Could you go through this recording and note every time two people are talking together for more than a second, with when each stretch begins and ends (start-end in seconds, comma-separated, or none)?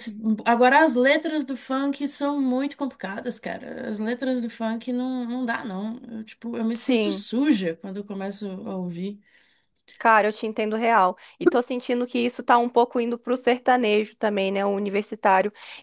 none